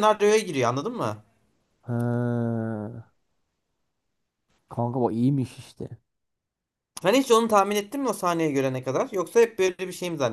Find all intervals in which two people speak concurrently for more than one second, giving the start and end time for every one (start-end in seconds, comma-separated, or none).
none